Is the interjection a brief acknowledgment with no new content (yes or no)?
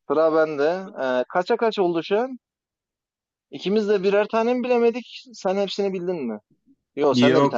no